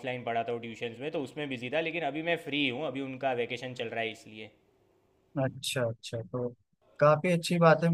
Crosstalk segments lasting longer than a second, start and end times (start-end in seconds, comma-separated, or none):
none